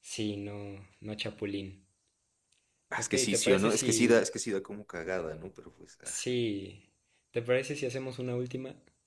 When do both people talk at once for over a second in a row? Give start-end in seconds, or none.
2.9-4.3